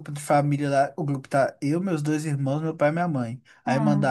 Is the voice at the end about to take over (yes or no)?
no